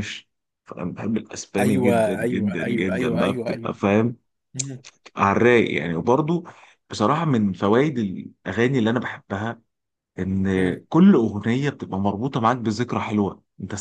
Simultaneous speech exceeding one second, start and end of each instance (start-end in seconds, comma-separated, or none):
1.6-3.8